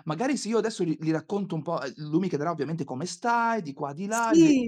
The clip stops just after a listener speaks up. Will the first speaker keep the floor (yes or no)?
yes